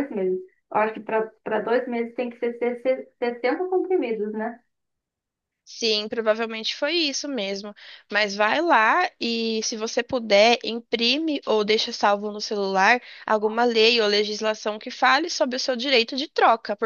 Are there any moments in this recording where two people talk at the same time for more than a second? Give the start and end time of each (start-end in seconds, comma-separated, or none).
none